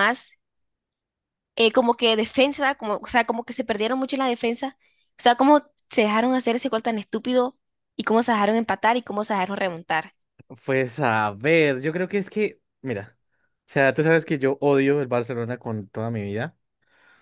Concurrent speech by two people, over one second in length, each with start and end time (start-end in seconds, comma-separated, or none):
none